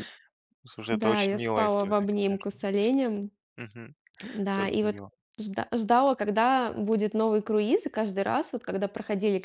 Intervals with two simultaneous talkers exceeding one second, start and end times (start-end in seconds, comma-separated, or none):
0.9-2.6